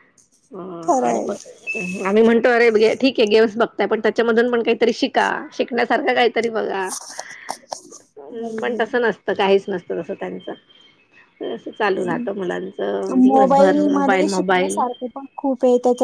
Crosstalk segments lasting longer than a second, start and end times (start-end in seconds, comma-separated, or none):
13.1-14.8